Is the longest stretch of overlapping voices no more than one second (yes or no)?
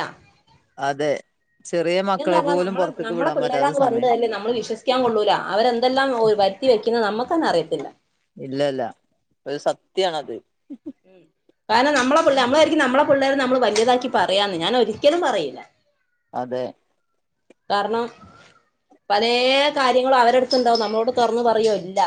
no